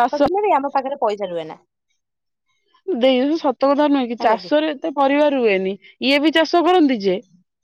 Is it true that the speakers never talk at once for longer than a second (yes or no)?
yes